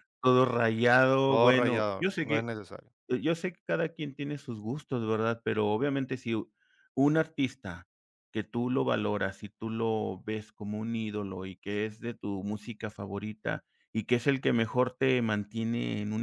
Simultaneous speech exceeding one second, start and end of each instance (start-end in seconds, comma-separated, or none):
1.2-2.5